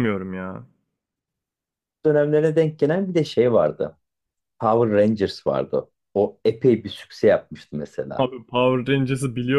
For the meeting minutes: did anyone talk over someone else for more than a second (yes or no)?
no